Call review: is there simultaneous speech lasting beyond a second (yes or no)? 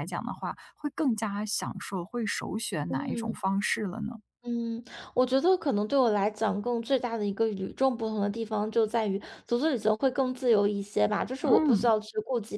no